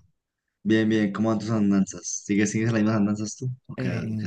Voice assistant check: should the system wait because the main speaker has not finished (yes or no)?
no